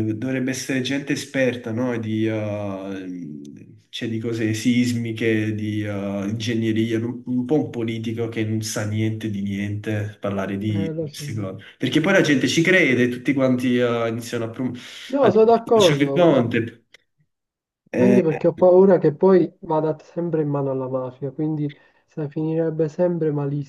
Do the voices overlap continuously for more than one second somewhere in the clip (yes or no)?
yes